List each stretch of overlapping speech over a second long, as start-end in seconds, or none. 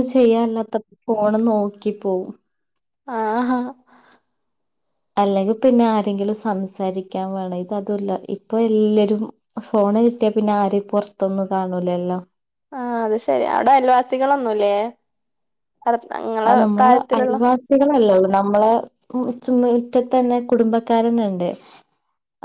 none